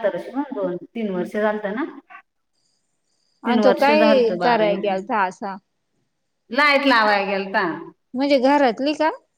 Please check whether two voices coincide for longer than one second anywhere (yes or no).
yes